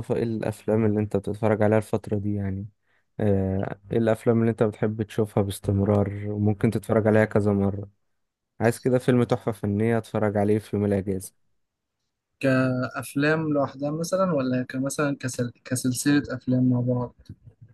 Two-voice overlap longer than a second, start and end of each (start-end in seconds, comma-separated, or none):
none